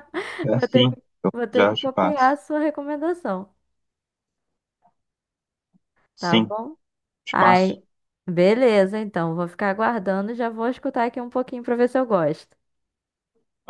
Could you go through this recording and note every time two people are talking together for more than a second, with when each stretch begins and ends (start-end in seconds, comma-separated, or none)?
0.5-2.4